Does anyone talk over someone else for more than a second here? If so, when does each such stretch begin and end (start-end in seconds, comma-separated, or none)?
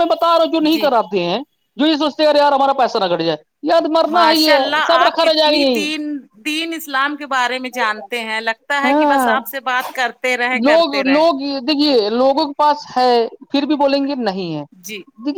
4.1-5.8